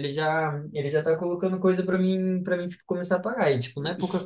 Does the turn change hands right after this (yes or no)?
no